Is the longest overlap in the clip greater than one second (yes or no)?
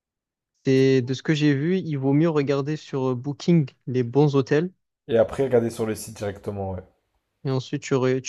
no